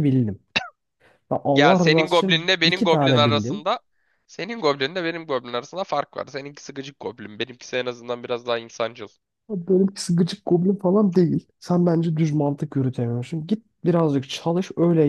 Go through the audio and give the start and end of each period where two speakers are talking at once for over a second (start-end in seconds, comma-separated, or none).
1.5-3.7